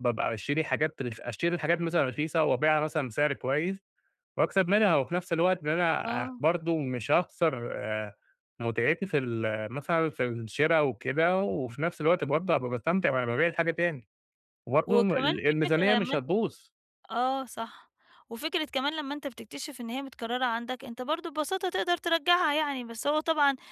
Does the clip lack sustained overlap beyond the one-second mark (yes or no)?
no